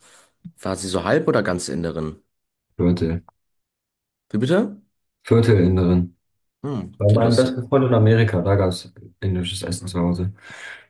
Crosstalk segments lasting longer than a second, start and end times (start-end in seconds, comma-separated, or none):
none